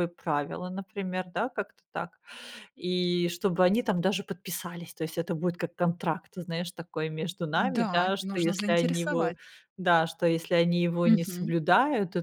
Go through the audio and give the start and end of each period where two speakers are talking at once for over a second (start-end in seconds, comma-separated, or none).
7.5-9.3